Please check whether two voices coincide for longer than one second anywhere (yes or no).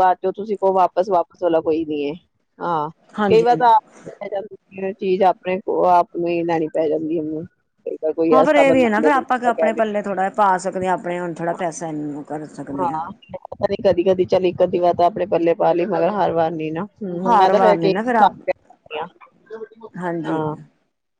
yes